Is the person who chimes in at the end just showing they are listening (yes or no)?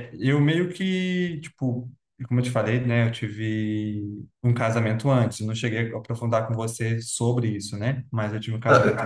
no